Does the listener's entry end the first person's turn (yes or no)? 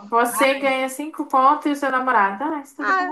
yes